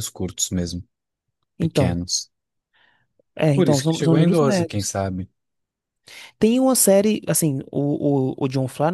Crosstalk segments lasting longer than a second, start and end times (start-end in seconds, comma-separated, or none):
3.5-5.0